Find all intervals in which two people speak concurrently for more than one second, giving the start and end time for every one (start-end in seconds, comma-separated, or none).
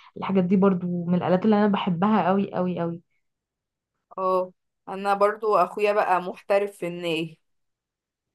none